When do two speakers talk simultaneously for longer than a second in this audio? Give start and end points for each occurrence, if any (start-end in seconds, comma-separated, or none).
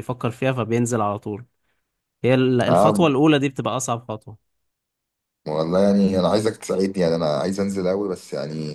none